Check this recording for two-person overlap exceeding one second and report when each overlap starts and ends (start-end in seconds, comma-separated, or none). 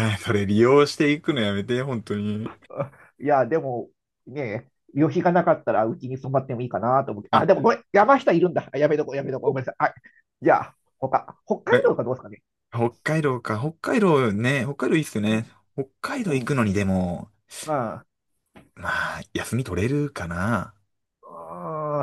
none